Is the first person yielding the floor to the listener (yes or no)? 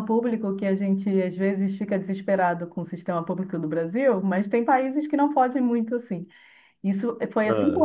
no